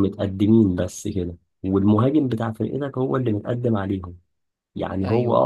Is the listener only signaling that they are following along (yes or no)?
yes